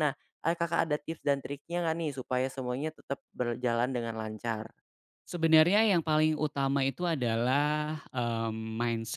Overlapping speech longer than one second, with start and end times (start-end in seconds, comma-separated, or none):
none